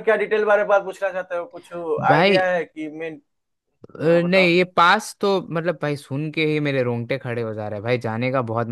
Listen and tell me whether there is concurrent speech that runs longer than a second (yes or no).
no